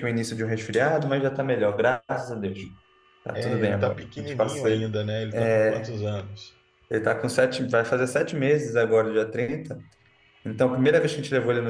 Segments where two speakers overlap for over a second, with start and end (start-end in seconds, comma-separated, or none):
3.3-4.7